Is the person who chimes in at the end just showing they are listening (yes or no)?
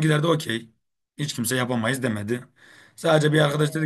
yes